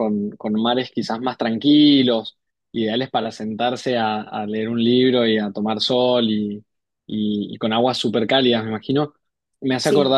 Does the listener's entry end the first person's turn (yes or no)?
no